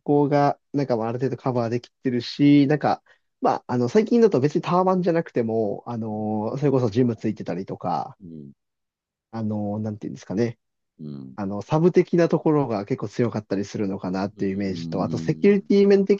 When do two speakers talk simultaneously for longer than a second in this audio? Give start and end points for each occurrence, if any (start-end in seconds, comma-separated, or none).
14.4-15.7